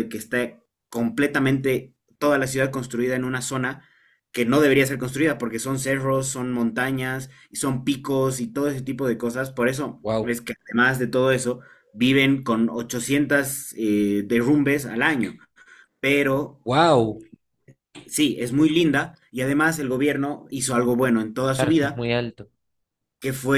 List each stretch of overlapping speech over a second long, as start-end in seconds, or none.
none